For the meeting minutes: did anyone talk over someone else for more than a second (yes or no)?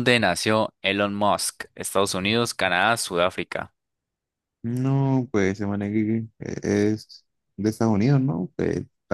no